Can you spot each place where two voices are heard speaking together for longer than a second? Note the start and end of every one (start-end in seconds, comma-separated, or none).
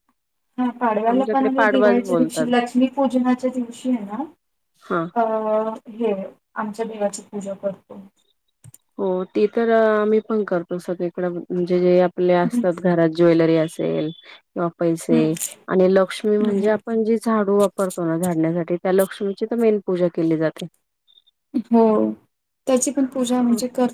1.1-2.4